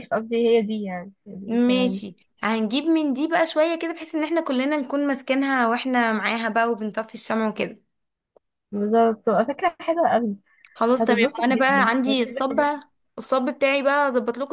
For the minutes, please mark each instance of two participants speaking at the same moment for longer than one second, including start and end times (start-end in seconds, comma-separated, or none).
11.0-12.7